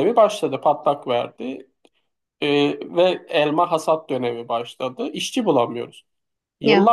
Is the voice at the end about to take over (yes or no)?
no